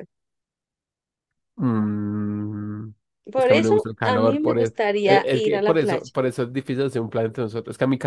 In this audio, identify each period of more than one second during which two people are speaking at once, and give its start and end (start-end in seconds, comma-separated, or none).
3.4-6.0